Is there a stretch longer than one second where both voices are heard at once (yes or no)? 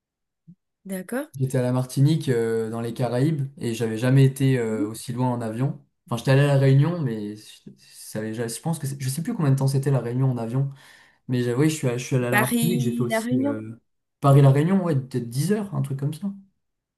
yes